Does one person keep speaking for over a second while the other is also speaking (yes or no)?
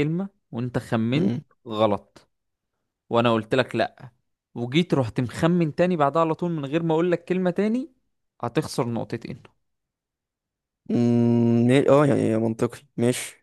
no